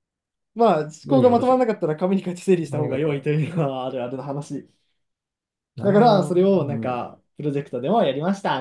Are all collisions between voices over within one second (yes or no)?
no